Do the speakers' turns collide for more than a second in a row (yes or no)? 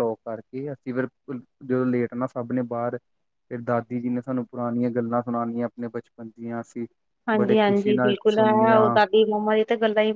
yes